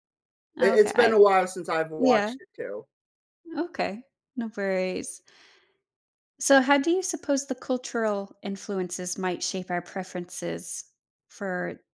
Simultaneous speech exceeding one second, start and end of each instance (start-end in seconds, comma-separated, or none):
none